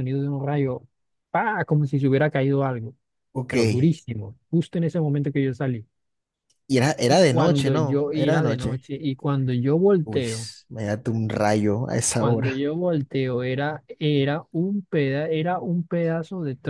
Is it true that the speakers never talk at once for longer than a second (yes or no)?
no